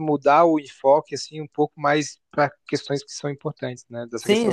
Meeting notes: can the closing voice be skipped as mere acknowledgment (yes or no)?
no